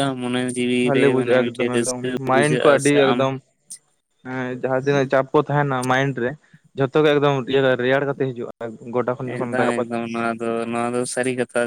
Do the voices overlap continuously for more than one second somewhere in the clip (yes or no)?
yes